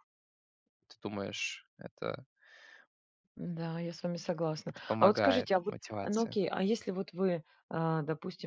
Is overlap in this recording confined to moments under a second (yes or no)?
no